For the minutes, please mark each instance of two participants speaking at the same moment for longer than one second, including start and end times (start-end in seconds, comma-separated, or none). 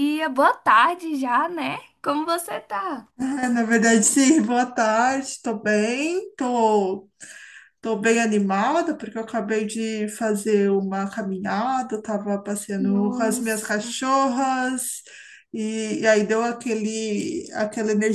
12.8-14.0